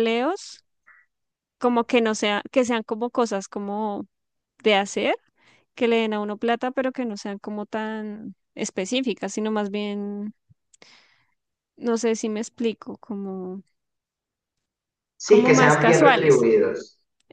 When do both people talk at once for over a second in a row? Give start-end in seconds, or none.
15.2-16.5